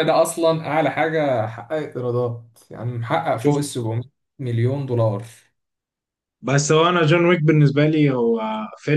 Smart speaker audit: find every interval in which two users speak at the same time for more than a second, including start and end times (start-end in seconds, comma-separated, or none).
none